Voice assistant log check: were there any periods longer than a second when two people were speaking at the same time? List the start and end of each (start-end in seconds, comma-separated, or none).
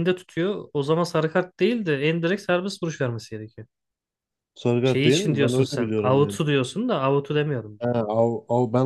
4.8-6.4